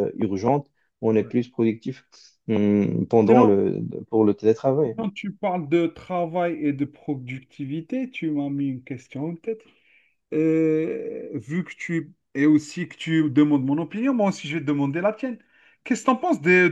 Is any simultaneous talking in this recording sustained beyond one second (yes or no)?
no